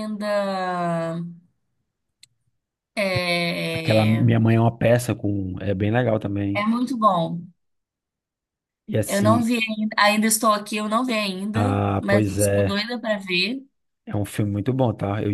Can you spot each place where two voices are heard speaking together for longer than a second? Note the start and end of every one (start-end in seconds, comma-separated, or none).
11.5-12.8